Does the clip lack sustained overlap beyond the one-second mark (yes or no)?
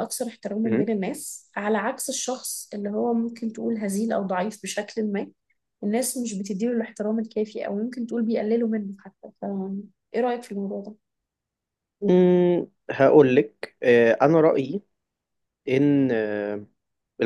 yes